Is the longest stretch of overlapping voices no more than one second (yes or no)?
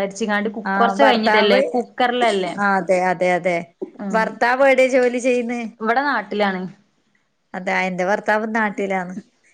yes